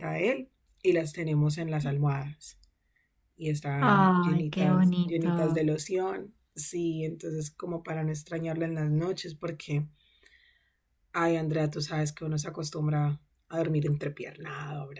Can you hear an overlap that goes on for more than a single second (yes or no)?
yes